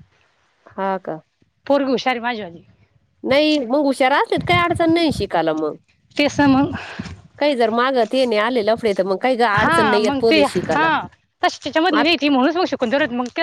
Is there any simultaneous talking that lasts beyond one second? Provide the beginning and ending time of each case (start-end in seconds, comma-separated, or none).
9.6-10.9